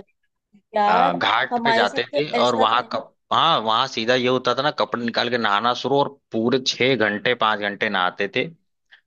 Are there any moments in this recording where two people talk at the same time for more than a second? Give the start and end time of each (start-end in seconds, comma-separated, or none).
0.9-3.0